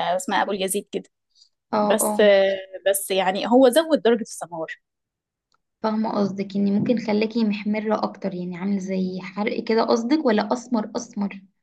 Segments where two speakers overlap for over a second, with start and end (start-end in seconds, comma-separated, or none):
none